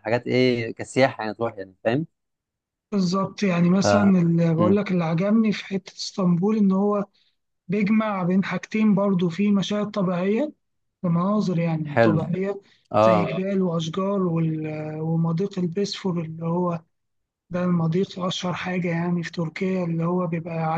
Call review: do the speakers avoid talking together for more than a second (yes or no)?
yes